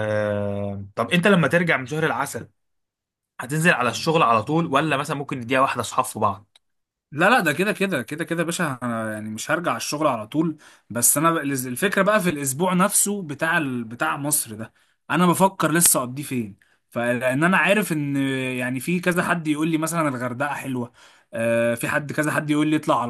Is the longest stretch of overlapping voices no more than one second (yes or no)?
yes